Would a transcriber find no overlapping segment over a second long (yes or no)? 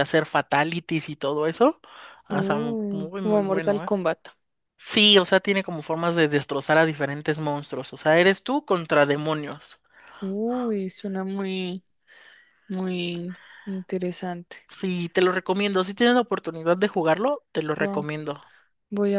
no